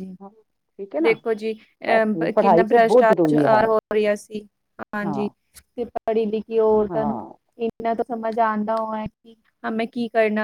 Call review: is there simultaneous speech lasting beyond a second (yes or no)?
yes